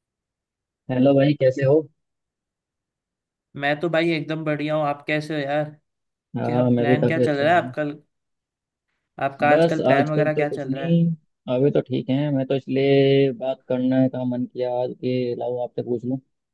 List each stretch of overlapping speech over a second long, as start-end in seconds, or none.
6.4-7.7, 9.5-11.0